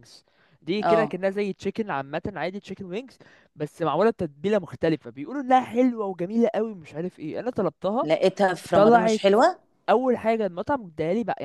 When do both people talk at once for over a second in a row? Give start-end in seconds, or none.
none